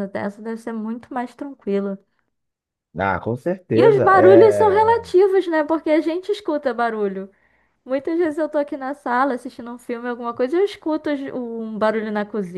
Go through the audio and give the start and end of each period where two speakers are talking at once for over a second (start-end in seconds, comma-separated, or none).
3.7-5.1